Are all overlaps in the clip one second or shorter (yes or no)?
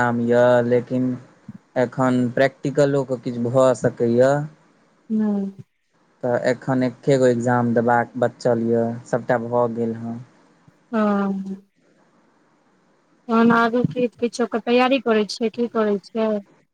yes